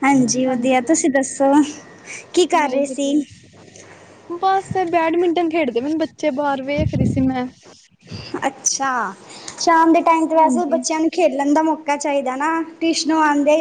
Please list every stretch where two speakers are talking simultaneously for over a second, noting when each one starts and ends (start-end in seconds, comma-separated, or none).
none